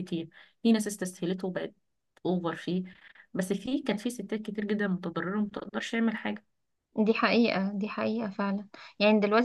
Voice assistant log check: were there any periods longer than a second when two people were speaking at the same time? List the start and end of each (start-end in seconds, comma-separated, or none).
none